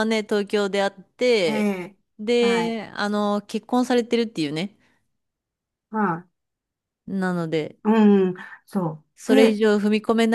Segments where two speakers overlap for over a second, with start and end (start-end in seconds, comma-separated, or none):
none